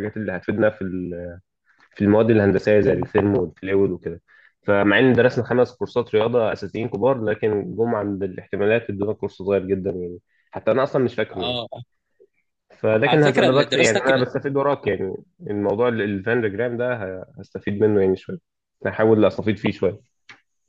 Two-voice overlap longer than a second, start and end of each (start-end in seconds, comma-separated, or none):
13.1-14.2